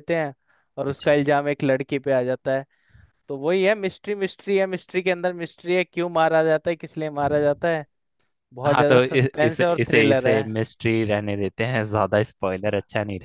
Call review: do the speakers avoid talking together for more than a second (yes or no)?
no